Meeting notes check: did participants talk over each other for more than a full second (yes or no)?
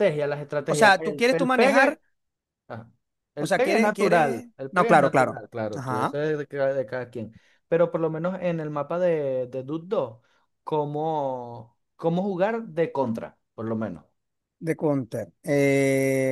yes